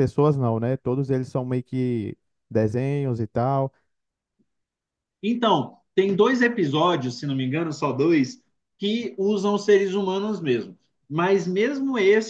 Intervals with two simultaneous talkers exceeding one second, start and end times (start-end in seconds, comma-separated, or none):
none